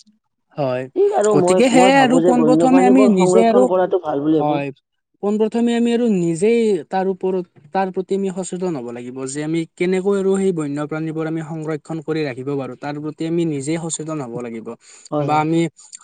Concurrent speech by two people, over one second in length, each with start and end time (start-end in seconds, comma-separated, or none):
1.3-3.6